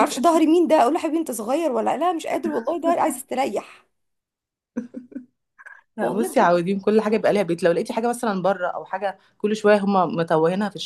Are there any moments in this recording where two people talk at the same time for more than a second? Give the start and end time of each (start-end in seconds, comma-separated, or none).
none